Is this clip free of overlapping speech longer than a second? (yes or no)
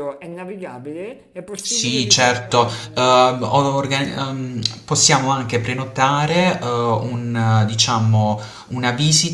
no